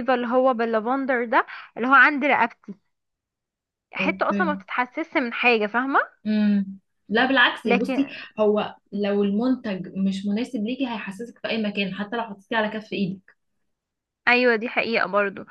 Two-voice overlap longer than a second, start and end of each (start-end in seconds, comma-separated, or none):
none